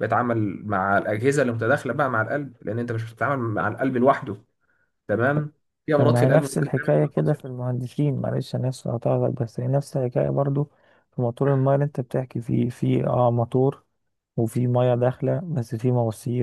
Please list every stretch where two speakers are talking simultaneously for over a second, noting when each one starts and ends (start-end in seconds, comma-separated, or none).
6.0-7.5